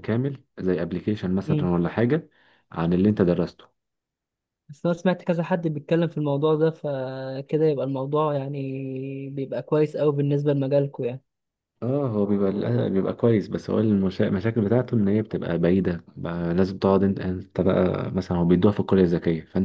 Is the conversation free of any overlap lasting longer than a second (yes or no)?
yes